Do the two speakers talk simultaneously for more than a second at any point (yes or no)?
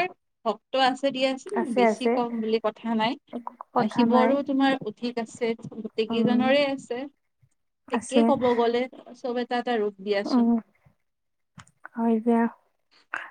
no